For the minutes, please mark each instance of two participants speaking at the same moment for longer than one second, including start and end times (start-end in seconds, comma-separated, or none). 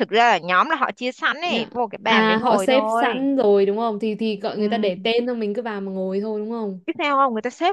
1.4-3.1